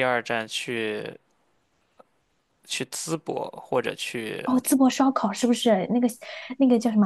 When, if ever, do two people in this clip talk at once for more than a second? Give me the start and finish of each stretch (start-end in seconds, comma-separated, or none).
none